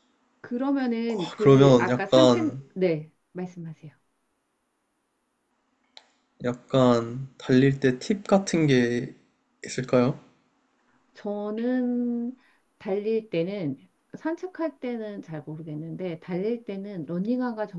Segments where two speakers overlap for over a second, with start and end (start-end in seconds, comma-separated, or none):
1.1-2.6